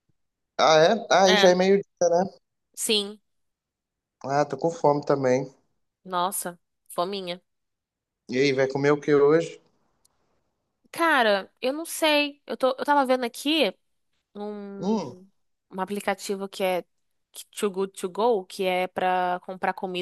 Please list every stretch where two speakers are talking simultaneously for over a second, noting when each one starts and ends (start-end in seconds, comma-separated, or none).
none